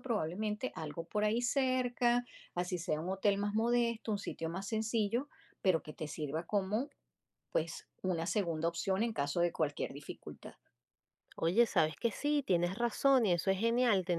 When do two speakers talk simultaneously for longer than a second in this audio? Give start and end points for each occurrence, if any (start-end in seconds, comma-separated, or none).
none